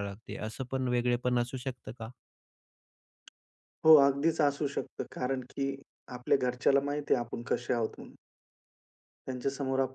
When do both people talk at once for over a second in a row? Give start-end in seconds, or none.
none